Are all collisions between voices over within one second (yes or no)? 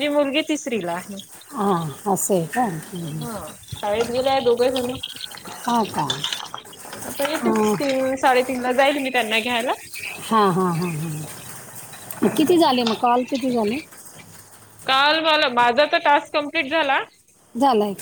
yes